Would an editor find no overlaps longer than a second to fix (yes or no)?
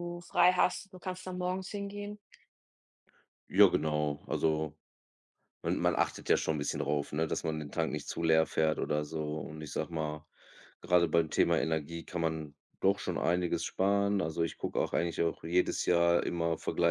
yes